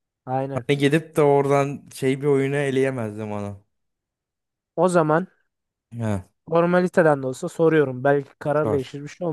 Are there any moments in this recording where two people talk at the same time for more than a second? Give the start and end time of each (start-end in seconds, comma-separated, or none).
none